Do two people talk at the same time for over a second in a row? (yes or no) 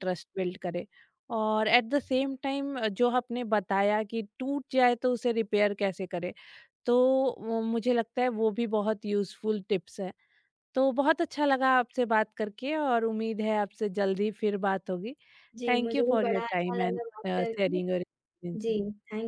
yes